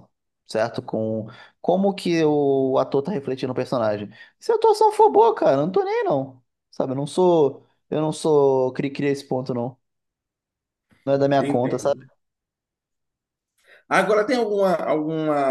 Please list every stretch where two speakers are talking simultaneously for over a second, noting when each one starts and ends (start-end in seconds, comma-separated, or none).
none